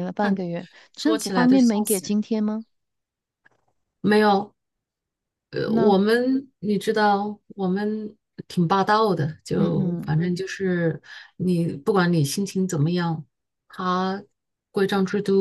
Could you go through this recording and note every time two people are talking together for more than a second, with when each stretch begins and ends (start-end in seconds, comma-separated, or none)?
0.9-2.2